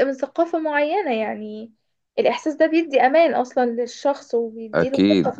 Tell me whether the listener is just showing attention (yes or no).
no